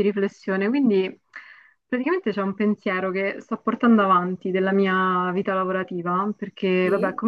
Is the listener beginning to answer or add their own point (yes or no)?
no